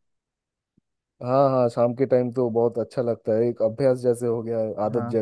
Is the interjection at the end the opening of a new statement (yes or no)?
yes